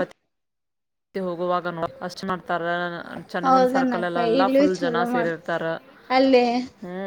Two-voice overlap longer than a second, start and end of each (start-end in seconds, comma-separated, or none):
3.5-5.4